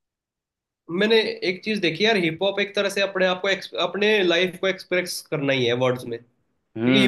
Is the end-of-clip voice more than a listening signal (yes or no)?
no